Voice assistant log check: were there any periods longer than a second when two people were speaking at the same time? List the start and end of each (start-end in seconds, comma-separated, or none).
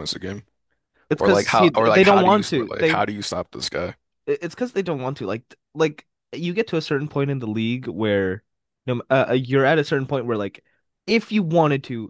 1.1-3.0